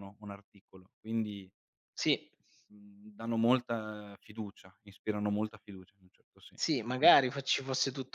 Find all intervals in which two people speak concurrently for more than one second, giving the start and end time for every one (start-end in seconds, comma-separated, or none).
none